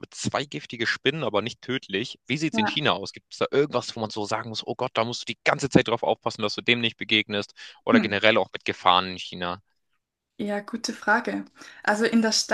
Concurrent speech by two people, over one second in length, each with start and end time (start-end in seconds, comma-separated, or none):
none